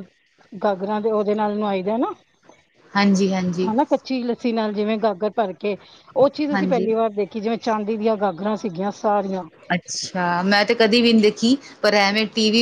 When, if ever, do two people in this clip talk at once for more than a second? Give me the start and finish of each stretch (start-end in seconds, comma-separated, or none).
none